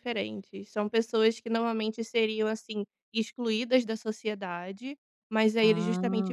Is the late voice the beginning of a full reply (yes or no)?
no